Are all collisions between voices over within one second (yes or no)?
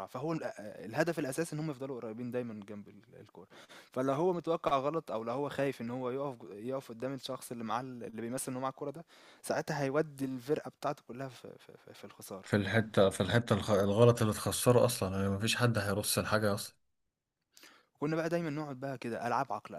yes